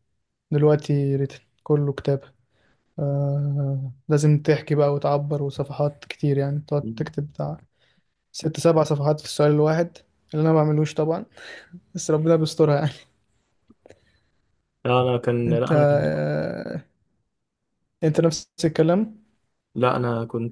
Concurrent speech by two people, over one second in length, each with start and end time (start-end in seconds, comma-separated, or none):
none